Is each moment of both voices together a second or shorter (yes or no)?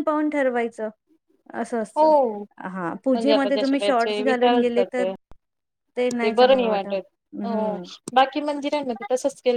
no